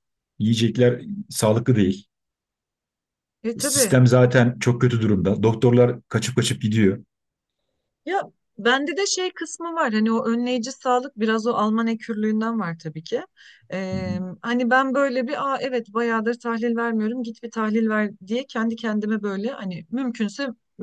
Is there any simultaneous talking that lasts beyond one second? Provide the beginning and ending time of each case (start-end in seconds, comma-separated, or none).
none